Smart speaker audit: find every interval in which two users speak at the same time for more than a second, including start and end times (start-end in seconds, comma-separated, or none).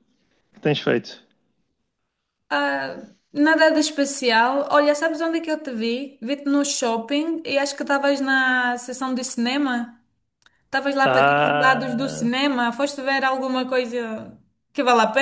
11.0-12.3